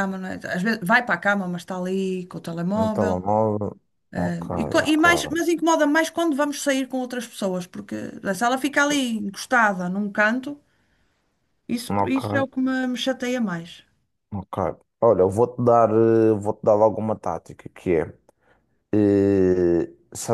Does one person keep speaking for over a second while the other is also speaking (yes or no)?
no